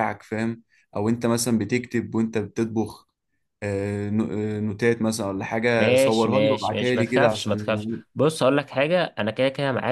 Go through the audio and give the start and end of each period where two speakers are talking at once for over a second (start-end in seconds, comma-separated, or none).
5.8-7.8